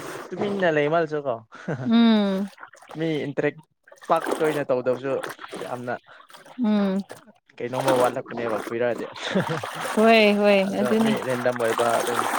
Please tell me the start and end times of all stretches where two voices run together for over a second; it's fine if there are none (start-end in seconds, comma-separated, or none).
none